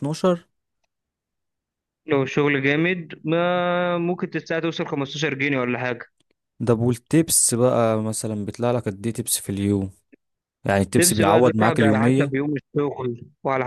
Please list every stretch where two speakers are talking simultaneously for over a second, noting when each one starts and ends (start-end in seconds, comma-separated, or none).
11.0-12.3